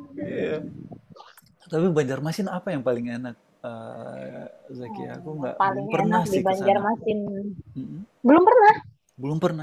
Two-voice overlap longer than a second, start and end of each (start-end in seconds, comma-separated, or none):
4.8-6.8